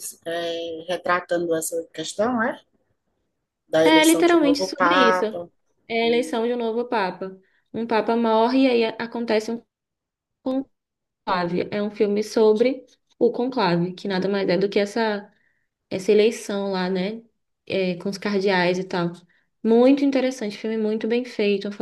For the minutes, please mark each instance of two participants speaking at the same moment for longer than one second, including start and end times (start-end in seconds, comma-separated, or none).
3.8-5.2